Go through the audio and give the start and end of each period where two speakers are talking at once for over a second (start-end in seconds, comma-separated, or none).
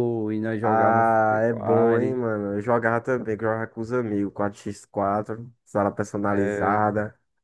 0.6-2.2